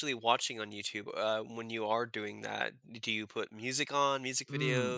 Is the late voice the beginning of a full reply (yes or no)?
yes